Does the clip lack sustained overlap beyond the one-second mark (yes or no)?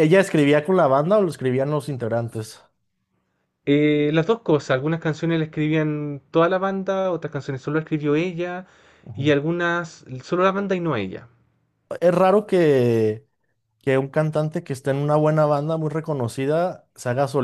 yes